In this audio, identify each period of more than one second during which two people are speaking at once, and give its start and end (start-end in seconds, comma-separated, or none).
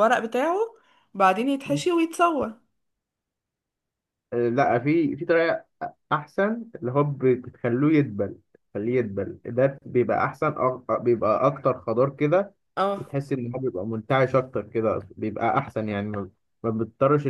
none